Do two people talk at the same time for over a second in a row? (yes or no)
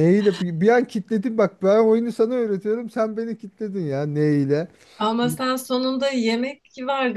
no